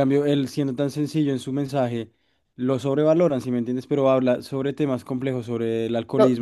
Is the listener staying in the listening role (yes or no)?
no